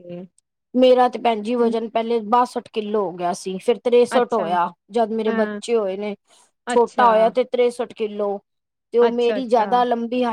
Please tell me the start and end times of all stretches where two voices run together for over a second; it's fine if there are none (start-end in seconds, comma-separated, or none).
none